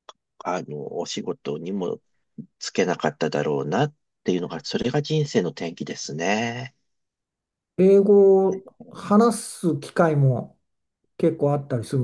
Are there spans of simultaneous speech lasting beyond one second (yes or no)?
no